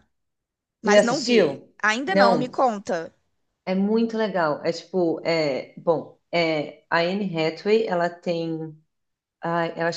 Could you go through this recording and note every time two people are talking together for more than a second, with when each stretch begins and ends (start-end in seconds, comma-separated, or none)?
0.8-2.5